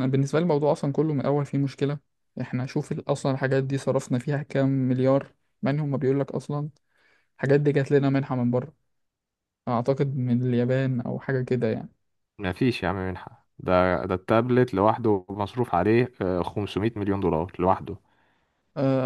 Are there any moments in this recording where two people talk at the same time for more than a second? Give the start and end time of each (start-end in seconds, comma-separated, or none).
none